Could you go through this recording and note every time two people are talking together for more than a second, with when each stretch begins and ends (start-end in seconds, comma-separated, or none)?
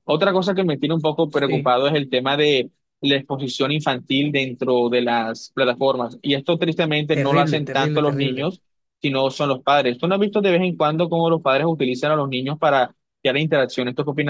7.1-8.5